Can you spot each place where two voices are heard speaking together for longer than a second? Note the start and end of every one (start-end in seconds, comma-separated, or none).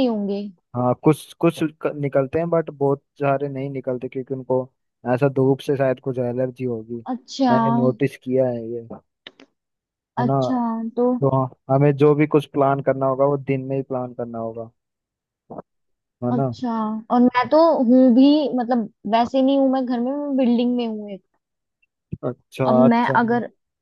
none